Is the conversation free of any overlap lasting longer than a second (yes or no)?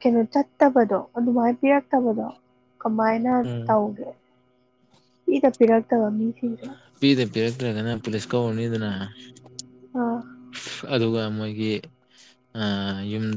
yes